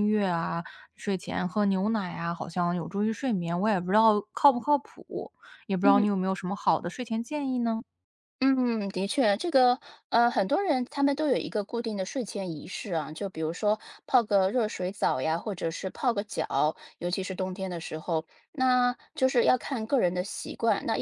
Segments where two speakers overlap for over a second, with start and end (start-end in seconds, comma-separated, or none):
none